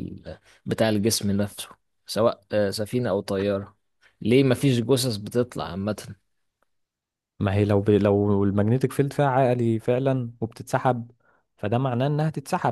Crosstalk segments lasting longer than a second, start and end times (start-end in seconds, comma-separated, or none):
none